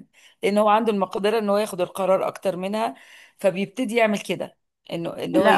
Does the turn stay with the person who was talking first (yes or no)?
no